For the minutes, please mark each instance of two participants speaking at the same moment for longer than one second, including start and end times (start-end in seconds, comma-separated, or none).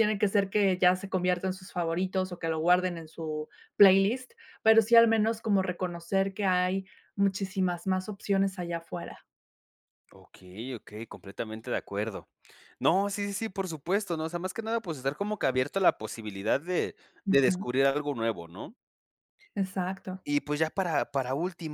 none